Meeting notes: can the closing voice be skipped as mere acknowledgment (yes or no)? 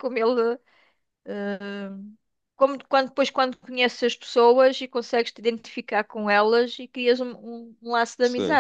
no